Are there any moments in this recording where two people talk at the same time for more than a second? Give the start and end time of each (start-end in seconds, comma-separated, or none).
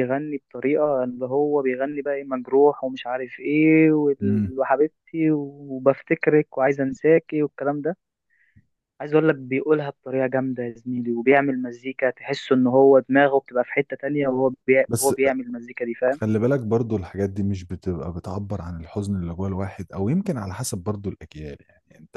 none